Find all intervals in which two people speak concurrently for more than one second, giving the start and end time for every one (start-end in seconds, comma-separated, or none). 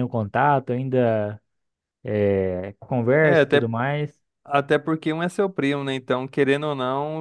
none